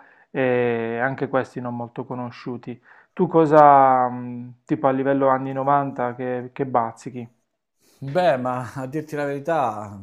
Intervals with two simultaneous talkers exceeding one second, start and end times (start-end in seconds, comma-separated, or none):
none